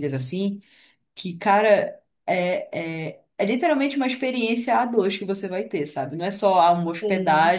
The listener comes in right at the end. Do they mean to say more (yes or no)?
no